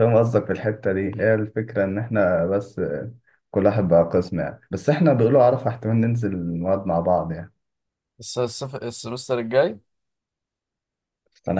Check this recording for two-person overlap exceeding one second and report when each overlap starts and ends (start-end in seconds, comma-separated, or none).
none